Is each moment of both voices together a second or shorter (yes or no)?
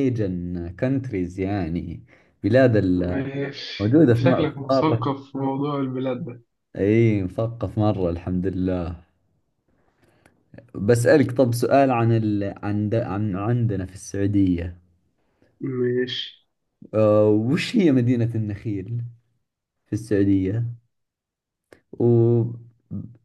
no